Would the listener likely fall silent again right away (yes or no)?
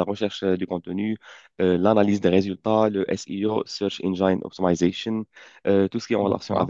yes